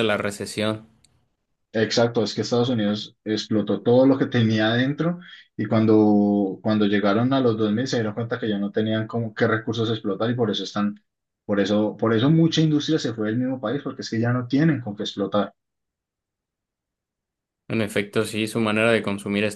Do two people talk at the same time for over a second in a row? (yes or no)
no